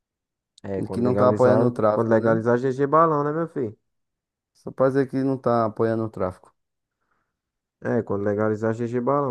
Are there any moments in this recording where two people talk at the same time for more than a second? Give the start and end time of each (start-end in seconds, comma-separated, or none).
0.8-2.4